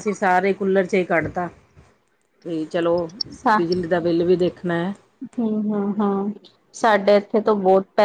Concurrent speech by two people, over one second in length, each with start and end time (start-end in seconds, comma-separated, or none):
none